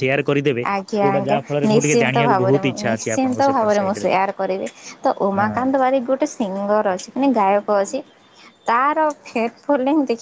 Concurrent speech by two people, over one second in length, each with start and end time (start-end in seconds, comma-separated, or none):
1.0-4.1